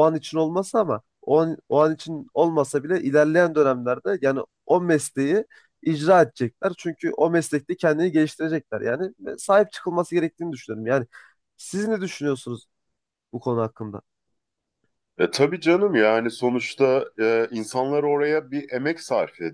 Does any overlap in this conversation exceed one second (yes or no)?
no